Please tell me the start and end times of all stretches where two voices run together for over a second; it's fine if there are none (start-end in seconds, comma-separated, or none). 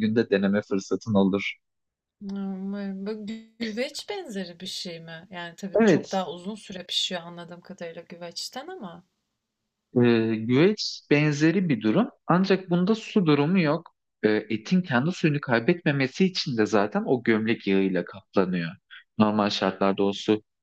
none